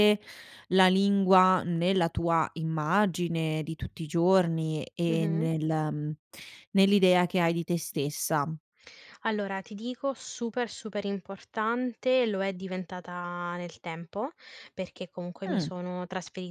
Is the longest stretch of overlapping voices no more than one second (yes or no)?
yes